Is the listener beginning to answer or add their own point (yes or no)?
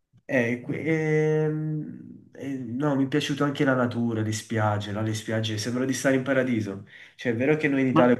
no